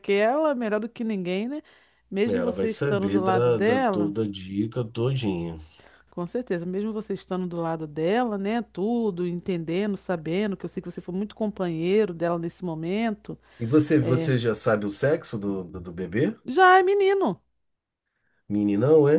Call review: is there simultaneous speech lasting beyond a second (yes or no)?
yes